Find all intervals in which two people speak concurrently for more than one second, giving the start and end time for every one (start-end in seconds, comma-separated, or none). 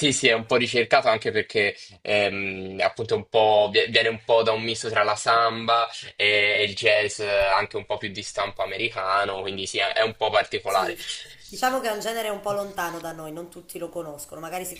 none